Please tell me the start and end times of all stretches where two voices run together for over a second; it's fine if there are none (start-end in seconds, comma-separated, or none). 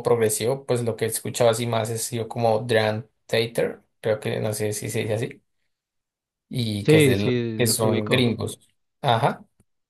6.8-8.4